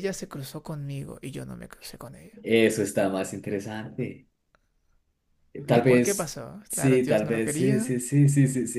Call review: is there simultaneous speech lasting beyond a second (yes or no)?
yes